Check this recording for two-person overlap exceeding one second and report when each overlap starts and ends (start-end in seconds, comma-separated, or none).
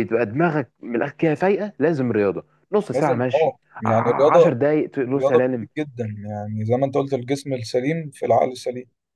2.9-4.5